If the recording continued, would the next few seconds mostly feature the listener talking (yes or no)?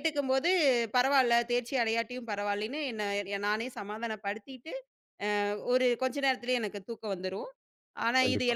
no